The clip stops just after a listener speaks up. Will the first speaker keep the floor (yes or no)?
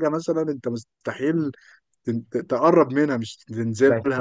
no